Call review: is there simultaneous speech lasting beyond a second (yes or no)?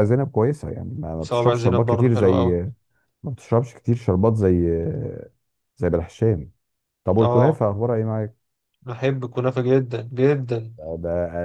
yes